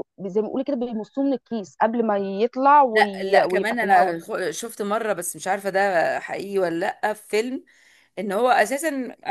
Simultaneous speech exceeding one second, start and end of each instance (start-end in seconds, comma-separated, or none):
2.9-4.2